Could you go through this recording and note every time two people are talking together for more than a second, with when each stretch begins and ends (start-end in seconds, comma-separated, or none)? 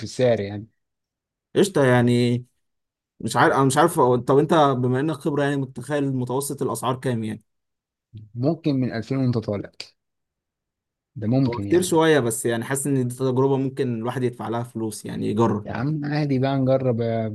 none